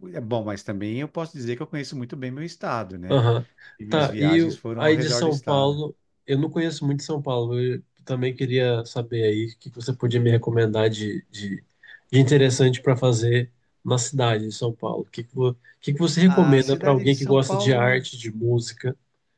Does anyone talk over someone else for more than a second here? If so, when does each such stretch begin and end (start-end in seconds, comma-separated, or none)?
3.9-5.8, 16.3-18.1